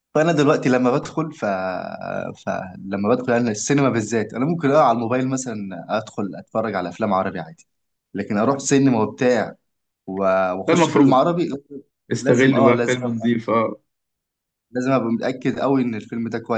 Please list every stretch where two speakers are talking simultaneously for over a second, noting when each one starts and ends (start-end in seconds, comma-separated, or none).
12.2-13.4